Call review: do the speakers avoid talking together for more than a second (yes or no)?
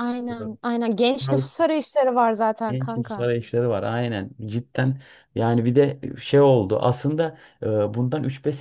yes